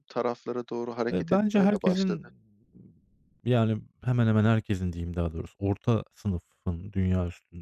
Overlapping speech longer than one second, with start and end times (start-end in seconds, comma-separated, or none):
1.1-2.3